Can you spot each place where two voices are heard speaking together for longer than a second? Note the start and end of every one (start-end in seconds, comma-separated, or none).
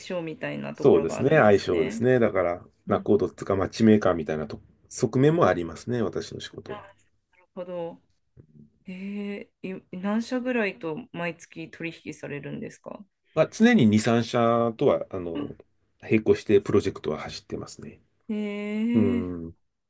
0.7-2.0